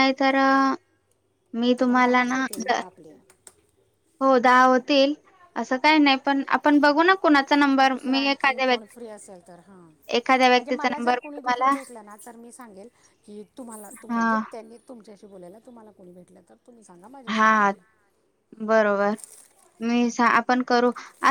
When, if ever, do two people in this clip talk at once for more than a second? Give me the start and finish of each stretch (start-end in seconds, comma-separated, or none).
7.8-9.8